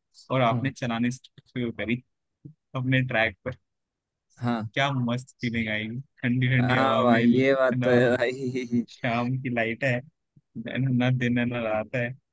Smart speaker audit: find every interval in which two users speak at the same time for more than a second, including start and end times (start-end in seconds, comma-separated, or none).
6.6-7.9